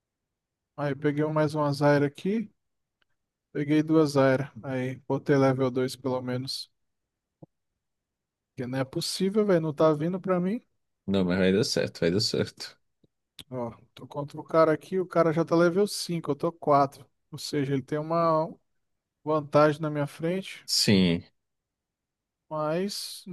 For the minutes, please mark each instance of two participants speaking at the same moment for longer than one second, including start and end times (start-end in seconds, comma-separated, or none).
none